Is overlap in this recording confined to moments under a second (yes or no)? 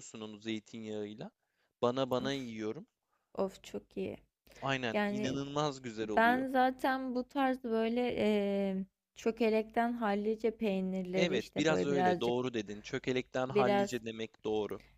no